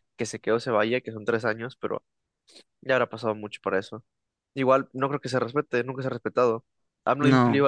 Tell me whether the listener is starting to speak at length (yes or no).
no